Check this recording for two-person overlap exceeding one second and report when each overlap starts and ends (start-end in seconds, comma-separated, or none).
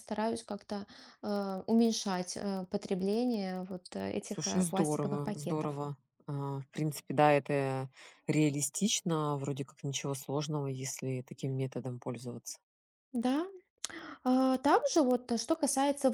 4.2-5.7